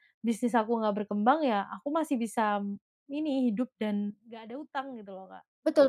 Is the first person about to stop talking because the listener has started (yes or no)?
yes